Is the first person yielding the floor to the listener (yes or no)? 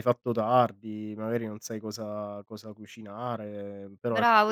yes